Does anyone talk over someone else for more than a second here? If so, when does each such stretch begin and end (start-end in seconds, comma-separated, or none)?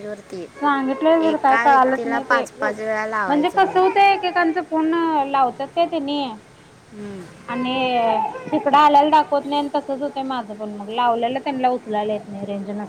1.3-4.0